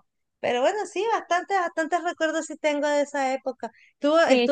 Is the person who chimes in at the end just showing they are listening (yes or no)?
yes